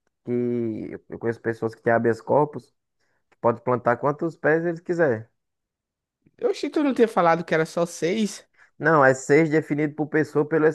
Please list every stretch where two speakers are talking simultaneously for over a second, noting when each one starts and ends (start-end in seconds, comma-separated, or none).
none